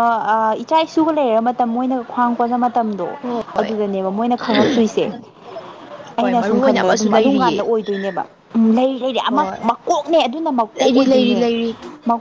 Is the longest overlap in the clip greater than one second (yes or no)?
yes